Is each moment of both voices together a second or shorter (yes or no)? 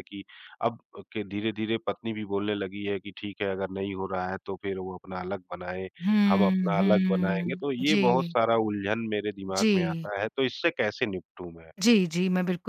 no